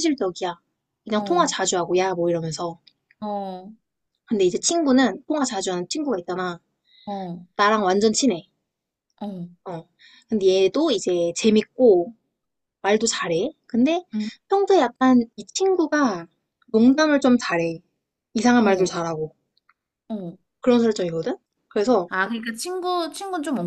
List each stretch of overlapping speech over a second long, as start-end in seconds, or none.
none